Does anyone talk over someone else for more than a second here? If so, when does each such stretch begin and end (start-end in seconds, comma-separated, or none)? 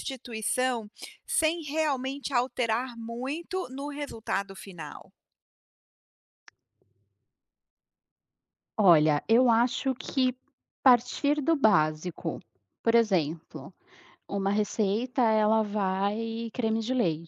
none